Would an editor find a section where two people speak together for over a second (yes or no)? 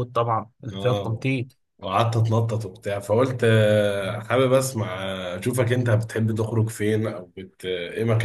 no